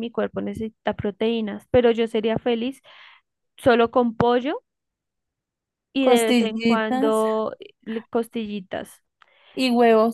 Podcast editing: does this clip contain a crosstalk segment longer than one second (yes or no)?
yes